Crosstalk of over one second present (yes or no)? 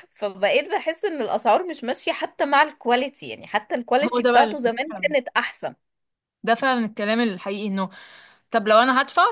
no